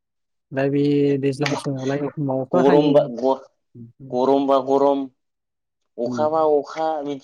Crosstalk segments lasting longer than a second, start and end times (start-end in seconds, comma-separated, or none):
1.5-2.9